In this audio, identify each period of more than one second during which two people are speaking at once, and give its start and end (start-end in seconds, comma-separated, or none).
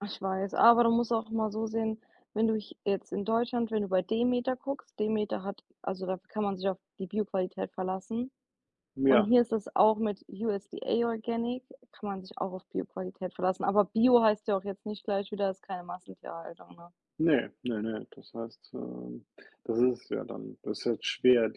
none